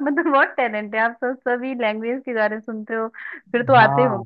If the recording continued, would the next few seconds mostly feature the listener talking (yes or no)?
no